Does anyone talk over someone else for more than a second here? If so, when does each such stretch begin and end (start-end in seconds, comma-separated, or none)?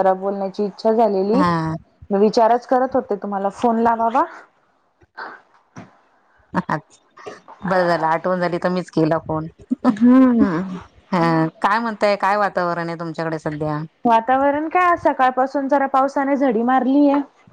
none